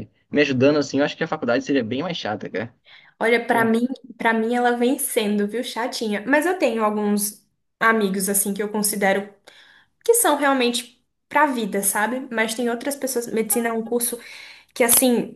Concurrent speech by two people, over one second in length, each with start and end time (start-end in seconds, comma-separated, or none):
none